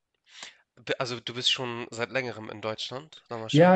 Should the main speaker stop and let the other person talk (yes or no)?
yes